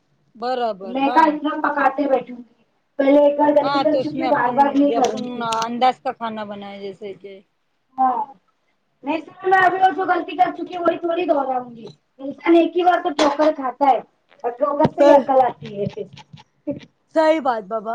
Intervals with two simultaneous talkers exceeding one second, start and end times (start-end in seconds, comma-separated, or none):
3.6-5.7